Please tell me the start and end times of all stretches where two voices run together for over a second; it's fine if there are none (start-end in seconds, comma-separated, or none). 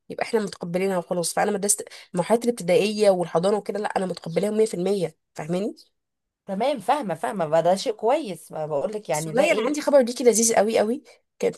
none